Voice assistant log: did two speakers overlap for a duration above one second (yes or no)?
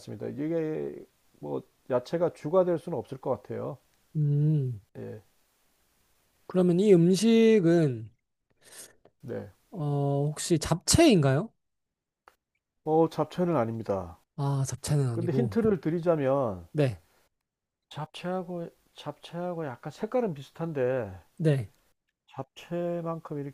no